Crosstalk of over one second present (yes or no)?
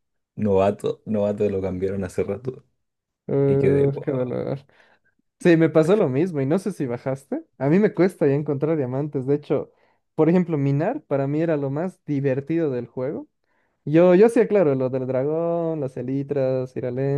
no